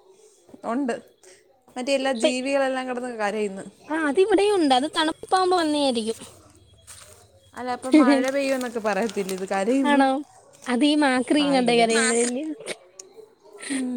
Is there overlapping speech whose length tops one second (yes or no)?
no